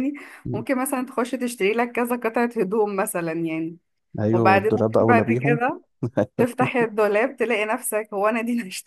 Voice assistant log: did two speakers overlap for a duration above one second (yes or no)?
yes